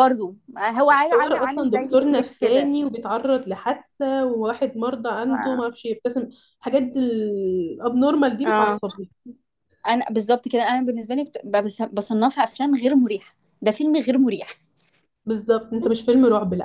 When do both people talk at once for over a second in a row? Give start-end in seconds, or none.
0.9-2.8